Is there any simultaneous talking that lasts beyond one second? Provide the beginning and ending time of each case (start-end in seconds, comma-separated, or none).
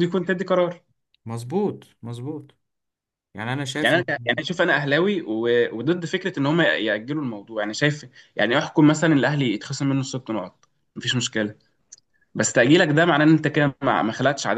none